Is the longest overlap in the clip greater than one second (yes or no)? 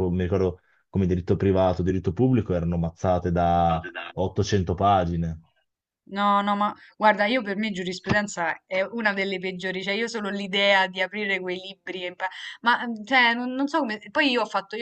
no